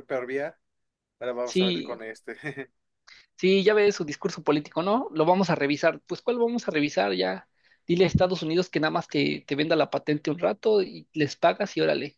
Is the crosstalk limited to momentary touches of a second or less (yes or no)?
yes